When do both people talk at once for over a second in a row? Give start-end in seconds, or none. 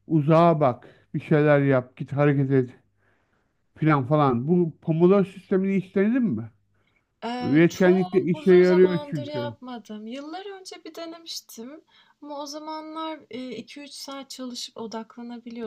7.4-9.6